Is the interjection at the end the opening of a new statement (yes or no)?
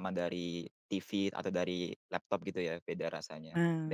yes